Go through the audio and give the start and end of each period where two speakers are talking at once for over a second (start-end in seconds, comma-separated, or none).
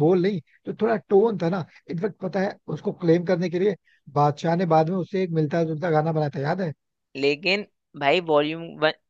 none